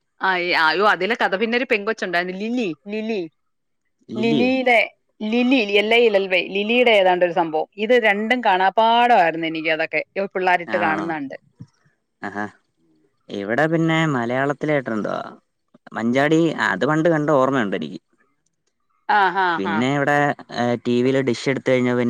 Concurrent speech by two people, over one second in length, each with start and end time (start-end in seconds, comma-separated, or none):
none